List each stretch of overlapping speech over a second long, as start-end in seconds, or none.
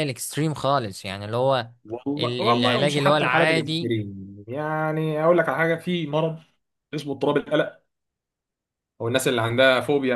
2.2-3.9